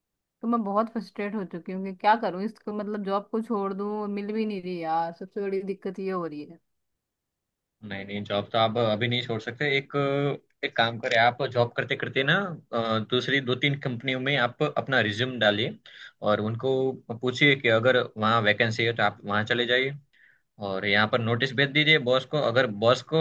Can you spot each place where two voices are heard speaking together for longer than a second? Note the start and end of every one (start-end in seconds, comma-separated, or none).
none